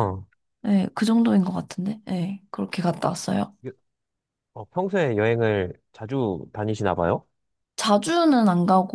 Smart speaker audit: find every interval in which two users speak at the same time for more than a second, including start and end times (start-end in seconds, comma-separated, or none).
none